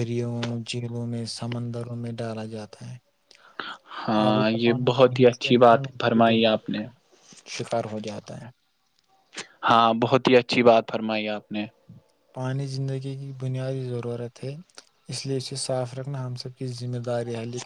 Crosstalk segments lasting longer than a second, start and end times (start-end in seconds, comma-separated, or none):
4.3-6.8